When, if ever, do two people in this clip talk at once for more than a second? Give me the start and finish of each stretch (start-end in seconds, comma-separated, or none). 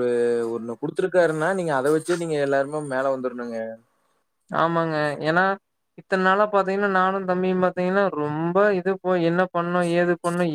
none